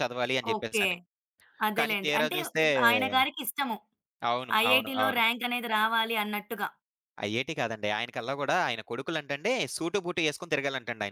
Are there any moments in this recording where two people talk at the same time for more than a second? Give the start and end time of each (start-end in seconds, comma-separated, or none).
none